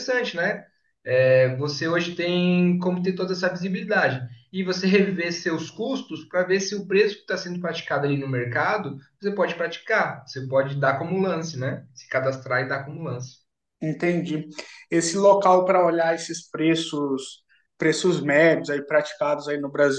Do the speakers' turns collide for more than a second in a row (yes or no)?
no